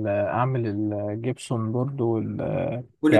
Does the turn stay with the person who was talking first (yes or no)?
yes